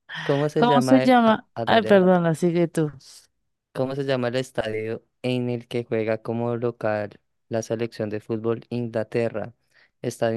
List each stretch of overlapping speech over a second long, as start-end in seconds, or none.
0.6-2.1